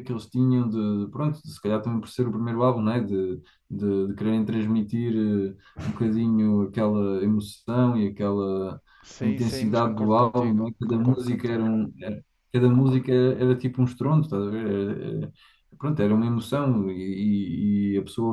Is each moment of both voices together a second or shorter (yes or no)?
no